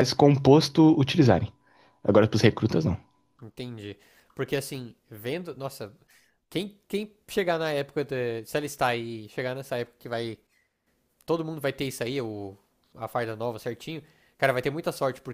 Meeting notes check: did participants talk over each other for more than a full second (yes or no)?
no